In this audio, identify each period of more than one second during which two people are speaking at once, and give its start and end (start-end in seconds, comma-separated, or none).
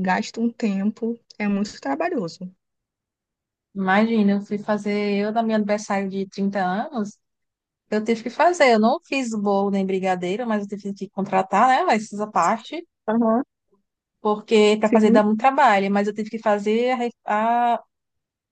none